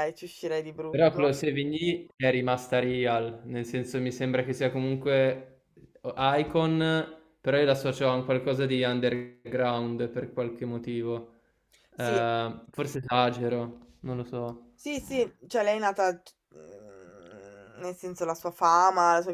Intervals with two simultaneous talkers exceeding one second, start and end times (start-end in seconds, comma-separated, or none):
none